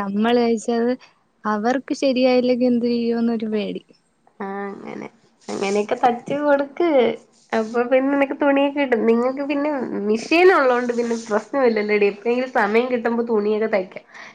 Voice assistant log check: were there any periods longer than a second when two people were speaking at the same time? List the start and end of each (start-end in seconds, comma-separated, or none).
none